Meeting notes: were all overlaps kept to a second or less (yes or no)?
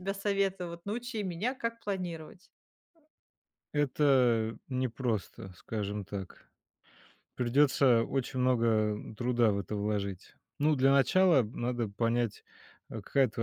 yes